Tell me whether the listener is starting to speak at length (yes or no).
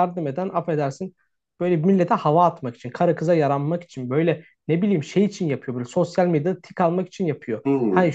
no